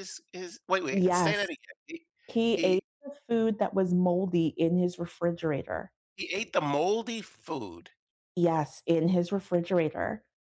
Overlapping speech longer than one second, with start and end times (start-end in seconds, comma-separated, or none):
none